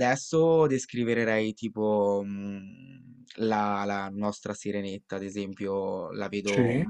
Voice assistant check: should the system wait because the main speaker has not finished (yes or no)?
yes